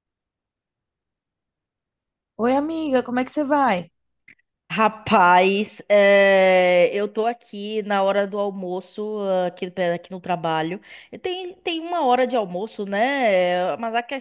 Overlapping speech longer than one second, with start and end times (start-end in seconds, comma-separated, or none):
none